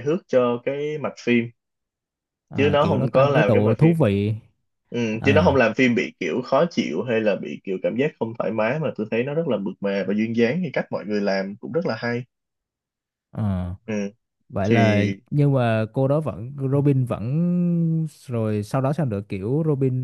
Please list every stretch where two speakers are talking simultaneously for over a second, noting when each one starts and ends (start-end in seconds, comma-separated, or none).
2.6-4.0